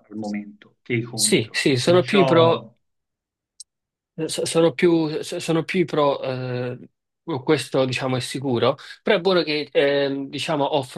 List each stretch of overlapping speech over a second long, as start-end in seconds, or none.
1.1-2.6